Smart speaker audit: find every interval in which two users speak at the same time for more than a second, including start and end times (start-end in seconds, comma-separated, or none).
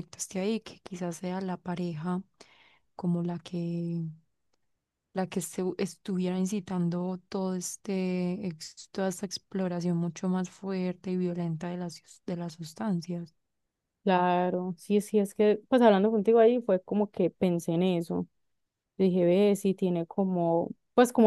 none